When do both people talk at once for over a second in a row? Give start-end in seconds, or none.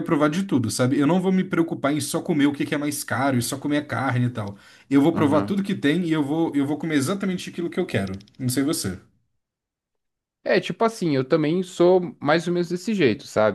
none